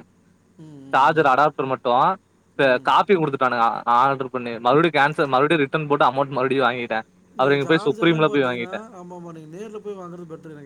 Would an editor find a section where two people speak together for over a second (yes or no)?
yes